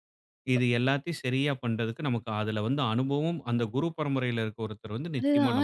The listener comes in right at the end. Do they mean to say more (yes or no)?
yes